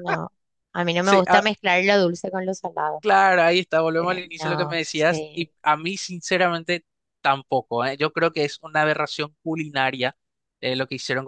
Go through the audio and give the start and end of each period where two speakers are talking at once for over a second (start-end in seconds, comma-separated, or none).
4.0-5.5